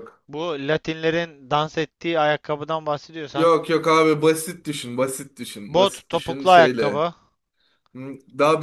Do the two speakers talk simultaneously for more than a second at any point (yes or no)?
yes